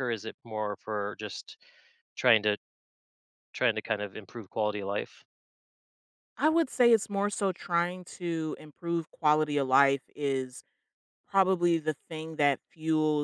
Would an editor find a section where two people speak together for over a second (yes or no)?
no